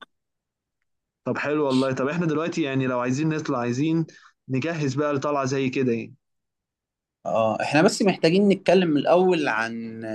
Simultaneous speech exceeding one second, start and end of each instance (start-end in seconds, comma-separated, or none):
none